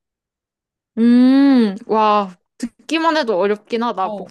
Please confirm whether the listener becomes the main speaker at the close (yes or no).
yes